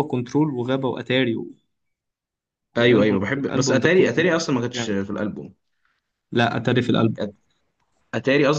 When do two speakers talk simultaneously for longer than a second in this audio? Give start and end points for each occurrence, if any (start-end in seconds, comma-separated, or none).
2.8-5.0